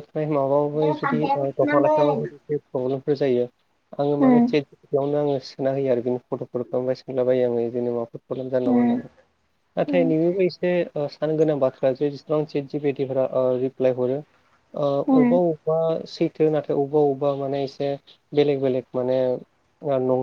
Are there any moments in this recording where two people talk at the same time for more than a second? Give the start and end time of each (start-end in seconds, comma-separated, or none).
0.8-2.3